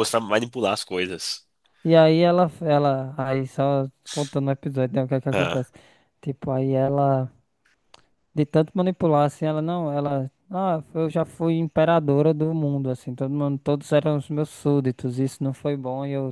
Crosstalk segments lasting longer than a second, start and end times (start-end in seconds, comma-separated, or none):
none